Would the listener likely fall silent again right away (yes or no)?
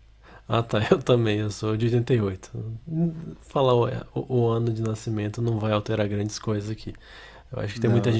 yes